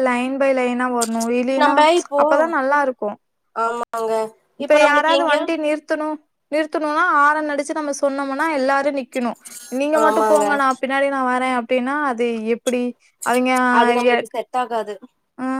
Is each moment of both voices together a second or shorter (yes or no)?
yes